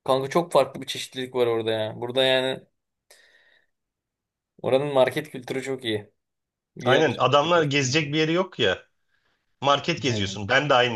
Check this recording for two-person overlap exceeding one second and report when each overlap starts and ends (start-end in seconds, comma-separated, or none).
6.8-8.1